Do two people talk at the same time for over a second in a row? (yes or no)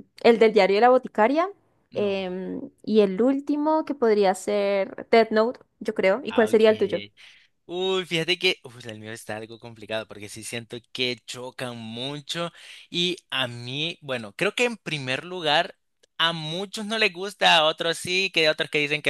no